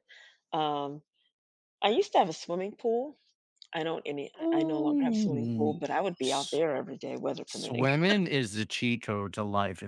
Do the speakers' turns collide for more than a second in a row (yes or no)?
yes